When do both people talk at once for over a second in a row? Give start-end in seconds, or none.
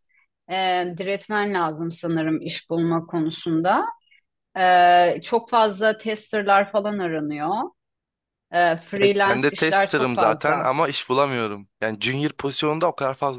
9.0-10.7